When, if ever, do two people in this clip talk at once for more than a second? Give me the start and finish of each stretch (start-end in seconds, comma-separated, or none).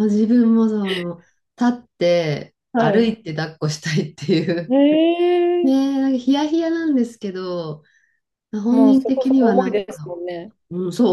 8.7-10.1